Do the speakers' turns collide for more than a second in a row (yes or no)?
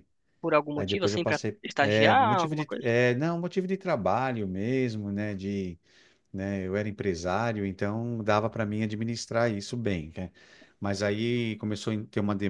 yes